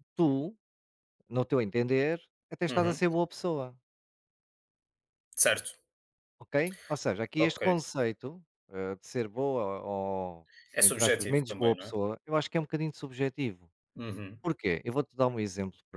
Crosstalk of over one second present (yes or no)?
yes